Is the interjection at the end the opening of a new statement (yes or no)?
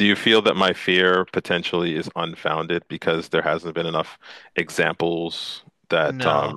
yes